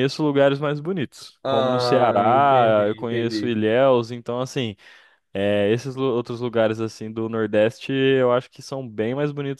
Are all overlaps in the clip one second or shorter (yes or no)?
no